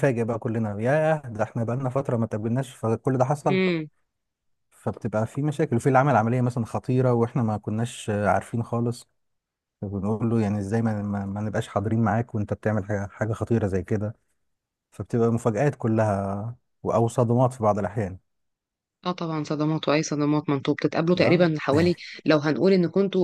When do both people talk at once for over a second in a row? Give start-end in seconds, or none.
none